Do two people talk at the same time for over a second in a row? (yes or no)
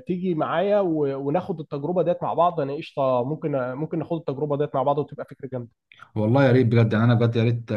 no